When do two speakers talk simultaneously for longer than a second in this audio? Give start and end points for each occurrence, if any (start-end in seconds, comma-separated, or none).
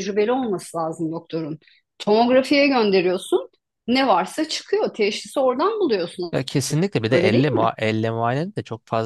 none